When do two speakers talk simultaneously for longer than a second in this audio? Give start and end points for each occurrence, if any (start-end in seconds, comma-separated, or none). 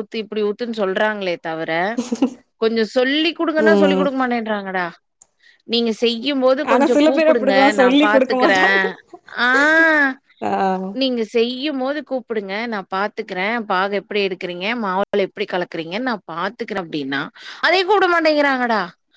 6.7-8.6